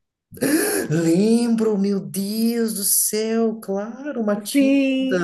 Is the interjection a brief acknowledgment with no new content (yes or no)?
no